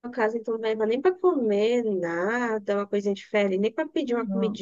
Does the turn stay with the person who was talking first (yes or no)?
no